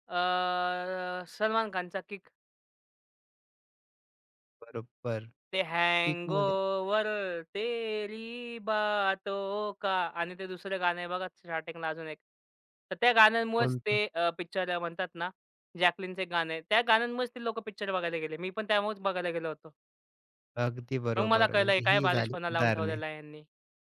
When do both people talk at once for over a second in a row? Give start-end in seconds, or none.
21.2-23.0